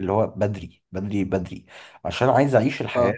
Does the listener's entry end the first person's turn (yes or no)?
no